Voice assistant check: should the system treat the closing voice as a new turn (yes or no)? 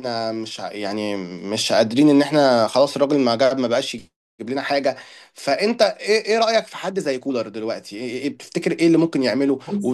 no